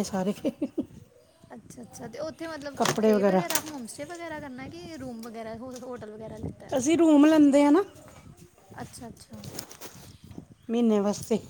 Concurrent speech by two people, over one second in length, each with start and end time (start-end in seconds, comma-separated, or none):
none